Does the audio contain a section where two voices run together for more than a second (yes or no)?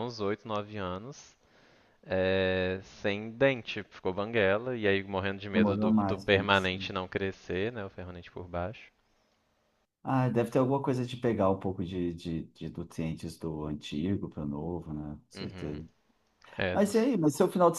yes